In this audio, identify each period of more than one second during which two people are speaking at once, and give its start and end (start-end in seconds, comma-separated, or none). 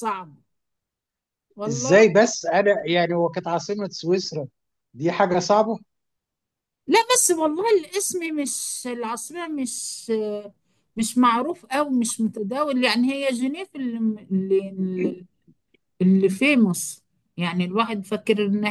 none